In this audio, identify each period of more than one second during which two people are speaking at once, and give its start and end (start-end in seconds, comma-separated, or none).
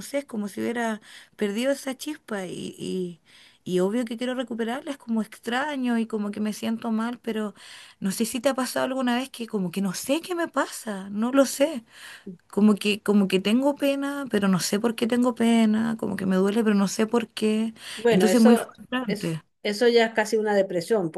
18.1-19.4